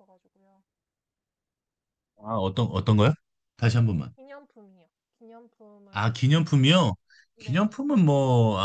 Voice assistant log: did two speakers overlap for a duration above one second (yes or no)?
no